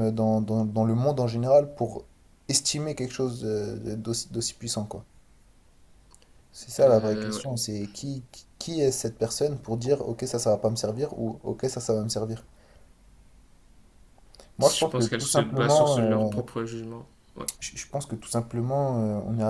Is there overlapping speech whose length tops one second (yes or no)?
yes